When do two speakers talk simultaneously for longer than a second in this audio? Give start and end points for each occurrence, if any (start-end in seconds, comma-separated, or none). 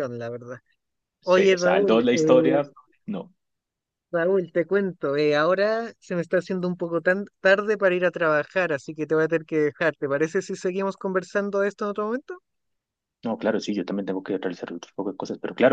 1.2-2.6